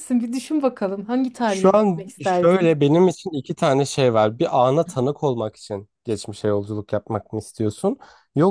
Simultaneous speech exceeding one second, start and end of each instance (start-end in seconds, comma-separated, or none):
1.5-2.9